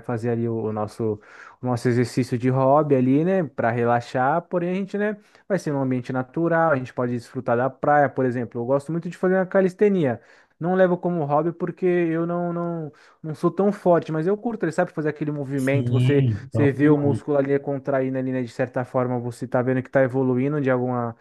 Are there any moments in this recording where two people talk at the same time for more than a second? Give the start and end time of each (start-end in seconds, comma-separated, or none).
15.6-17.2